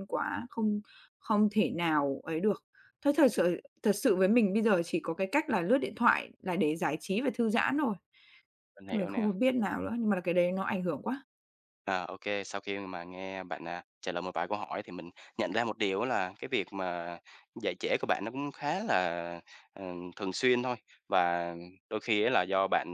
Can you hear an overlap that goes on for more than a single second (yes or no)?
no